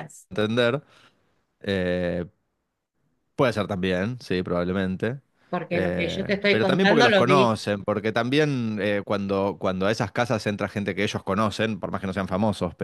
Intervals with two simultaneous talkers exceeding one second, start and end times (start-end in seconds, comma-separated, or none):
5.7-7.5